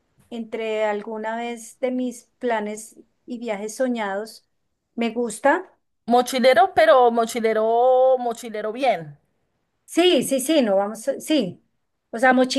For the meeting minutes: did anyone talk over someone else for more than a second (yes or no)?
no